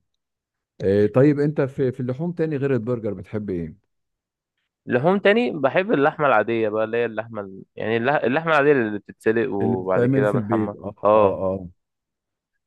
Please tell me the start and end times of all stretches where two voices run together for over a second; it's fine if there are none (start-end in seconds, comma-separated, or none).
9.6-11.4